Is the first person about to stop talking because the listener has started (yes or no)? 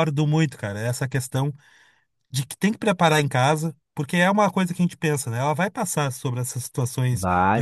no